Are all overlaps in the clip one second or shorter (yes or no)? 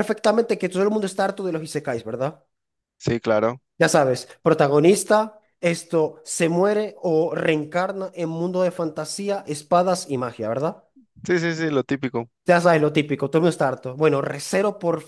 yes